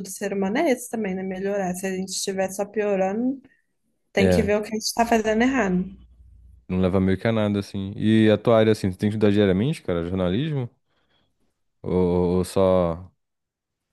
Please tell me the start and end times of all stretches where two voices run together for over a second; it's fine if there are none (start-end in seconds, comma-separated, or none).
none